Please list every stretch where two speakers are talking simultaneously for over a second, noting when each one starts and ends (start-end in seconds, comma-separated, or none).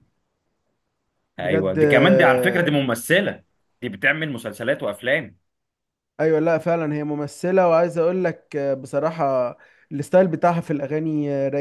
1.4-2.6